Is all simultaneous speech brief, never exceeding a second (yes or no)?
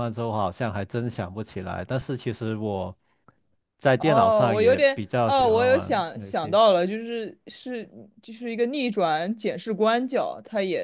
no